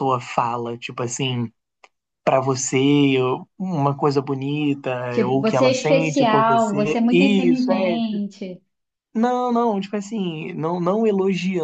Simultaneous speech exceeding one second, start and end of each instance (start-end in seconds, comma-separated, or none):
5.1-8.0